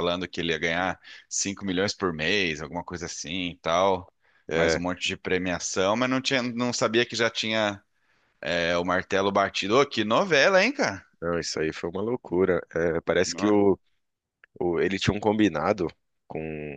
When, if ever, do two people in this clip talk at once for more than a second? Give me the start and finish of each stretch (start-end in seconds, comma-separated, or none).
none